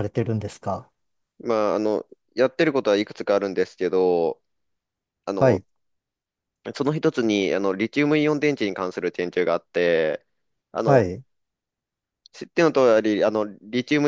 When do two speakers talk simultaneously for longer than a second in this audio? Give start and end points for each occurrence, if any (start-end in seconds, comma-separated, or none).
none